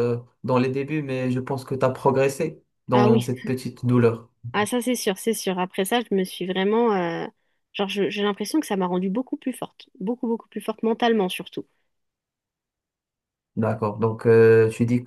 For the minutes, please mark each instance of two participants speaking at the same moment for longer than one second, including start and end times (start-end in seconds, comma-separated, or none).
none